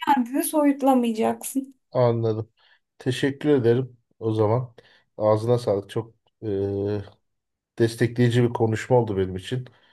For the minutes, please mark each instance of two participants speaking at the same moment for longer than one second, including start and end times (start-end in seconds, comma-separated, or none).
none